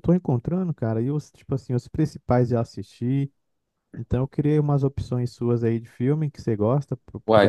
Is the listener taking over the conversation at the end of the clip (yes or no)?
yes